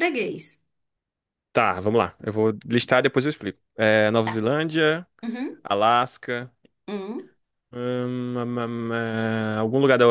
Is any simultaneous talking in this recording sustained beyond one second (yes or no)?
no